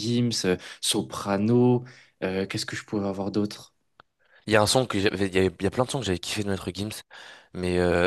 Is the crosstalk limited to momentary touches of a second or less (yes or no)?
yes